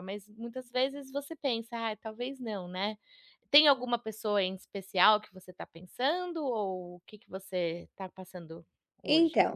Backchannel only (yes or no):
no